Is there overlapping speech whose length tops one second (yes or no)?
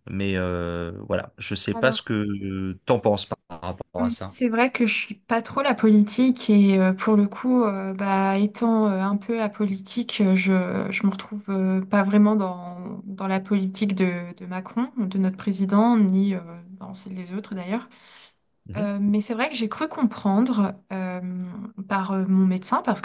no